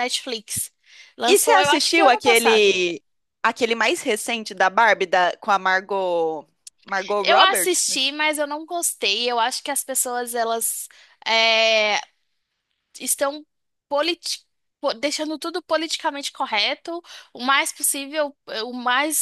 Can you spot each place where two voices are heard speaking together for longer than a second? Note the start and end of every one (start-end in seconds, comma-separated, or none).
1.3-2.8